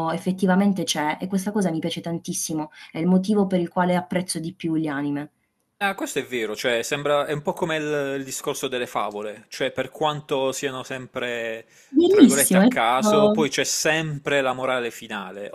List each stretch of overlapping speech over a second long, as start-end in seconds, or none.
12.1-13.4